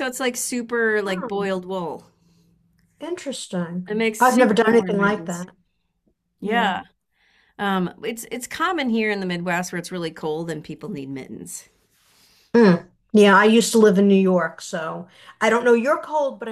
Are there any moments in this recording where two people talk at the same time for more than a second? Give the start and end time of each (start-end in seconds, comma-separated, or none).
3.9-5.5